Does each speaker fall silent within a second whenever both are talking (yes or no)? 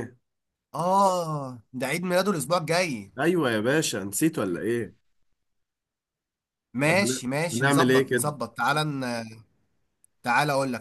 no